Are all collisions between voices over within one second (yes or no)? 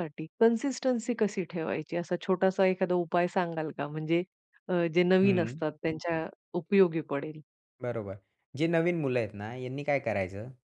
yes